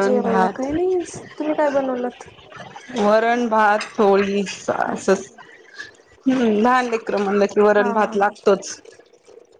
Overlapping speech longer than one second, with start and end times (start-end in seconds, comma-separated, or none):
none